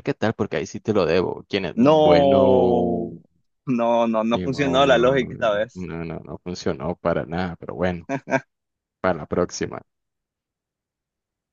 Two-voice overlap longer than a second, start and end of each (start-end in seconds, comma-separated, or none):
1.8-3.1, 4.3-5.9